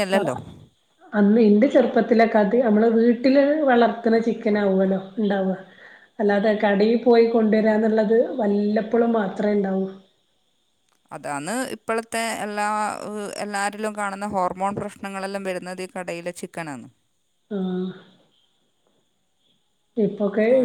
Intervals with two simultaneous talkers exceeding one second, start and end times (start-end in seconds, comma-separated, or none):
none